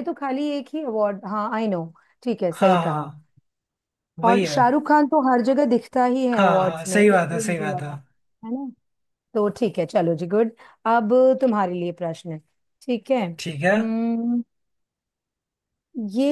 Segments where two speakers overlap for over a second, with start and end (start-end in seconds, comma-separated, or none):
6.3-7.9